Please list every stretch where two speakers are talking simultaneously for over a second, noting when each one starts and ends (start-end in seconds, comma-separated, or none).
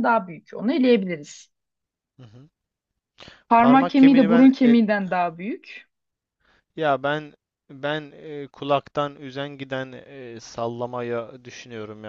3.6-4.8